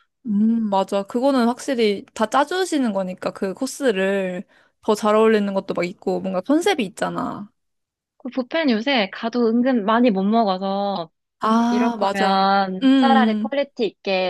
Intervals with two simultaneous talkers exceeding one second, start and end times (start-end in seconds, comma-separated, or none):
11.7-13.5